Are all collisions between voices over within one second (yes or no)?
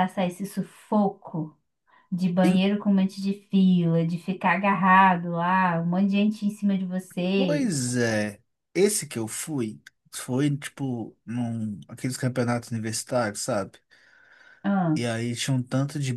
yes